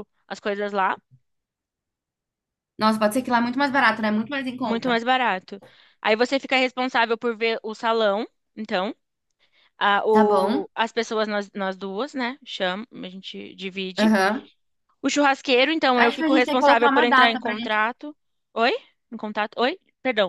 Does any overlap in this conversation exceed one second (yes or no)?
yes